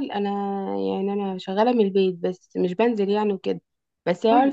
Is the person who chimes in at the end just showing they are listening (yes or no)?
yes